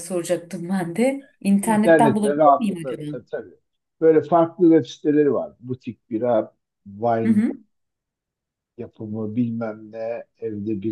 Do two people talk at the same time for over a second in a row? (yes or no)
yes